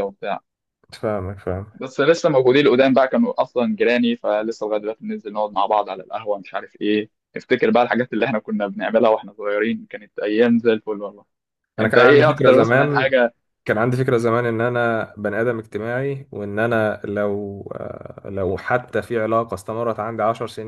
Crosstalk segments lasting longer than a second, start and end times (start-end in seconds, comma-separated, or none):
11.8-13.2